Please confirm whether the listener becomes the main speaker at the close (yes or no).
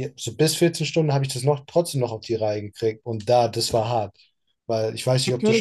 yes